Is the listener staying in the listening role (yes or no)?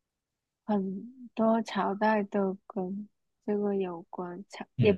no